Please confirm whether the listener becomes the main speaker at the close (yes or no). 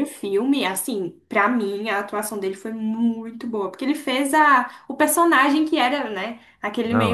no